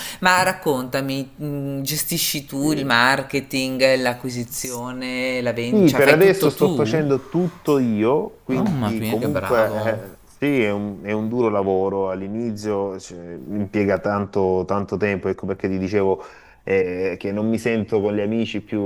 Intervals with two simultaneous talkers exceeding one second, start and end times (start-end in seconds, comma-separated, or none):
5.7-7.0, 8.5-10.0